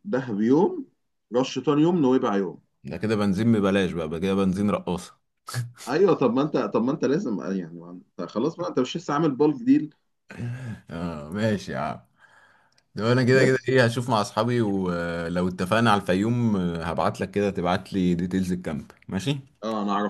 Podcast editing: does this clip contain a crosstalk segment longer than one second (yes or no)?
no